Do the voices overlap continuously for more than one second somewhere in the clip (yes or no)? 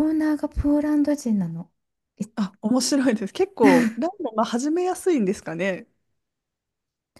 no